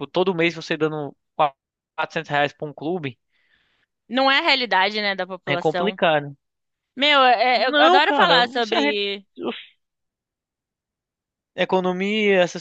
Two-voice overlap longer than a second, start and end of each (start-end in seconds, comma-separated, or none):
7.5-9.0